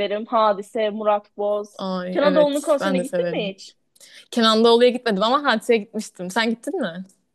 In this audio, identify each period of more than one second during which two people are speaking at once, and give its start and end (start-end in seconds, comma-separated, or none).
1.8-3.5